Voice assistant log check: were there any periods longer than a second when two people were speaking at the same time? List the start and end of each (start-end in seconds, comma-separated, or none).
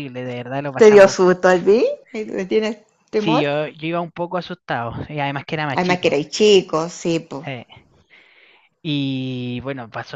none